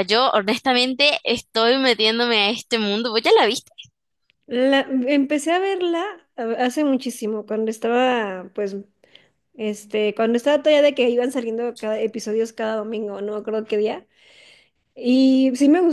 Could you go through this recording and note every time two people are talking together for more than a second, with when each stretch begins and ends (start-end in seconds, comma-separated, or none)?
none